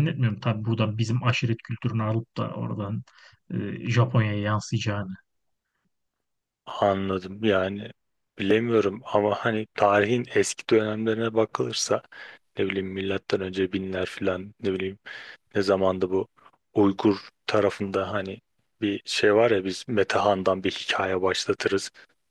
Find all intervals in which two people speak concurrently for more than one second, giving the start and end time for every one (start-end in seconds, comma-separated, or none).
none